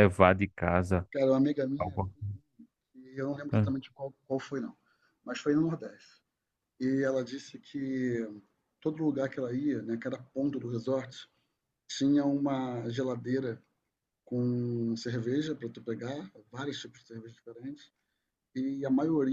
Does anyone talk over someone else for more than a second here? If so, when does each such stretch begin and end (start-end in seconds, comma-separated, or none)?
none